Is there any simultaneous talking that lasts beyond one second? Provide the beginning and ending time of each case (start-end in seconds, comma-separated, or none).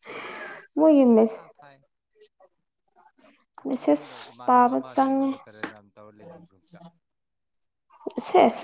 3.8-5.3